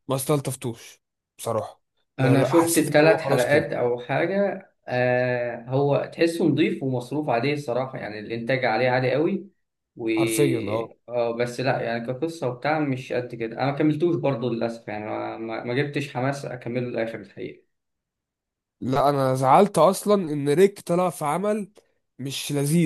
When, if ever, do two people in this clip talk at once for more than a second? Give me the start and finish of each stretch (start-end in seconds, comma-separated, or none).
2.2-3.7